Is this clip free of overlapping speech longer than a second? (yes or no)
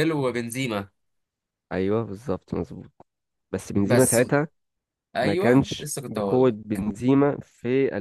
no